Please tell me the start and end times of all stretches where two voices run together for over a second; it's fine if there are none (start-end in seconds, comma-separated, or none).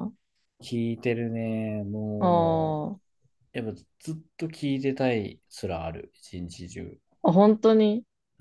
none